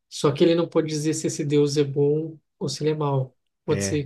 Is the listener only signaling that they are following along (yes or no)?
yes